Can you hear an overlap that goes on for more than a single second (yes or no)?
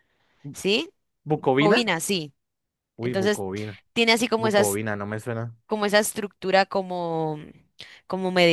no